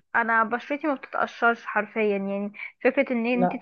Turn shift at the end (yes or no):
no